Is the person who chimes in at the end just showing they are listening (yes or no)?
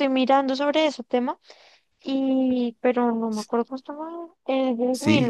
no